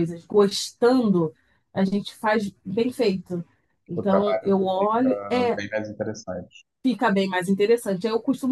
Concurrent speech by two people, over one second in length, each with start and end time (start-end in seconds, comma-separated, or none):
4.0-5.6